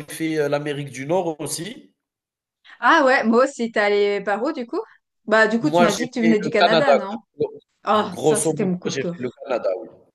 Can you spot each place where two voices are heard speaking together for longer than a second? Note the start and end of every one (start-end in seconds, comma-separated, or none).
5.6-7.0, 8.1-9.4